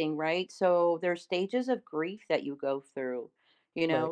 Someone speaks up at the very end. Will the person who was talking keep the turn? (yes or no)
yes